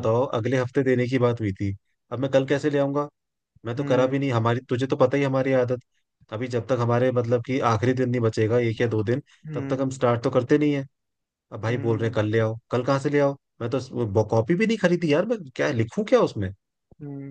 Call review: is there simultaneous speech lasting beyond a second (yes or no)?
no